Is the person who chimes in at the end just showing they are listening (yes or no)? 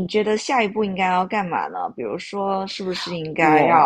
yes